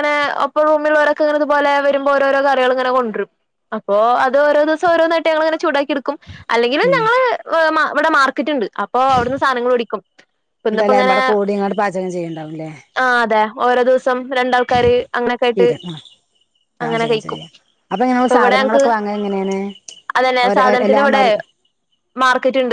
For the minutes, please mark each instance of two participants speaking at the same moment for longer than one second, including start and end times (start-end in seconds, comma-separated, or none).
none